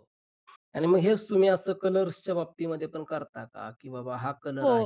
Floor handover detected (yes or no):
yes